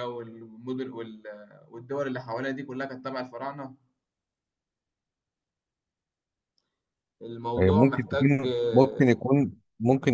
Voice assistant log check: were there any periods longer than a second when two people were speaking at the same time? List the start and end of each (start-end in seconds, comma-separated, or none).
7.6-9.3